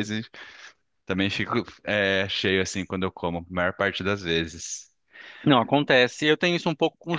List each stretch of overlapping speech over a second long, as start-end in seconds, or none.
none